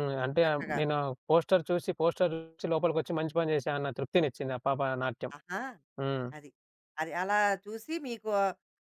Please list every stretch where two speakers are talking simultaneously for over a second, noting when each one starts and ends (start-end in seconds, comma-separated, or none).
none